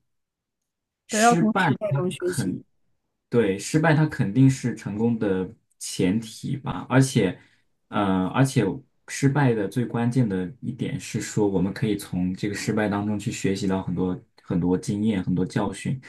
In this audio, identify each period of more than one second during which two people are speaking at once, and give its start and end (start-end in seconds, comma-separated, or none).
1.1-2.6